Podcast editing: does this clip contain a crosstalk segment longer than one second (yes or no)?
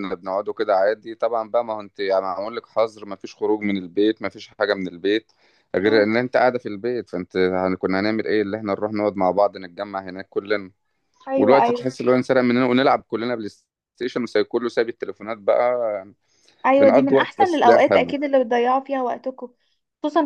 yes